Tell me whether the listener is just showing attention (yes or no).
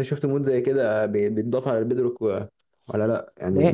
yes